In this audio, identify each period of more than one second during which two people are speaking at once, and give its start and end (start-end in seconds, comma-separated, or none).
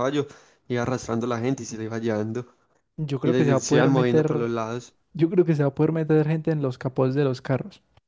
3.2-4.5